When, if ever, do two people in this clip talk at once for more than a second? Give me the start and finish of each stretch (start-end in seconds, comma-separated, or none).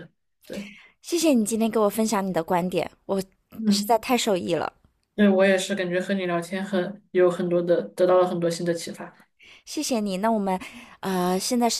none